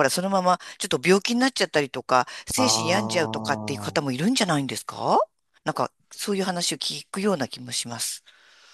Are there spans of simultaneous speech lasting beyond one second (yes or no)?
yes